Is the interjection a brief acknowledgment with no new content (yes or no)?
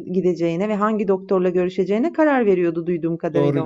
no